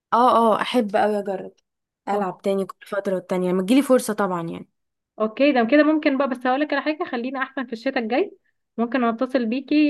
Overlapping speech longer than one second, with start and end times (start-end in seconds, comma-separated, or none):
none